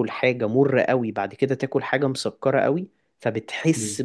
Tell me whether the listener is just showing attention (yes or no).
yes